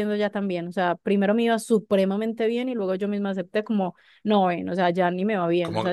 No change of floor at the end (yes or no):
no